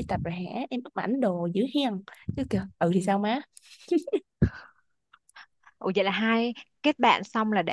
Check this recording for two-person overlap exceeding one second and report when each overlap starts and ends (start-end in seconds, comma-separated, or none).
none